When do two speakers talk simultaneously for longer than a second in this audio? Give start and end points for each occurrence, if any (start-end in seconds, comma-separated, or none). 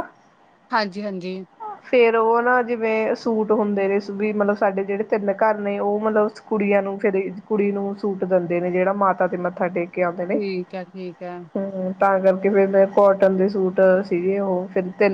none